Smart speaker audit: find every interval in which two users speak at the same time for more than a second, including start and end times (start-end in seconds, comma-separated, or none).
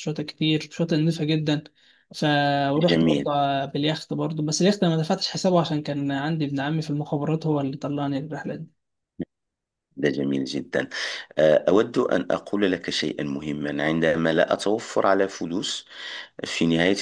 none